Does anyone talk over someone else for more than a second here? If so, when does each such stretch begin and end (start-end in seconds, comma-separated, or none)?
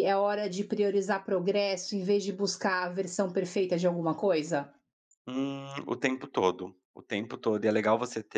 none